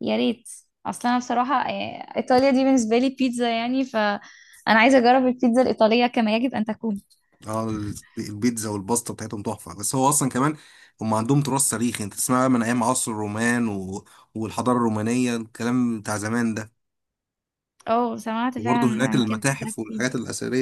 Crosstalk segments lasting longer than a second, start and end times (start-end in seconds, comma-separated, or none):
18.6-20.1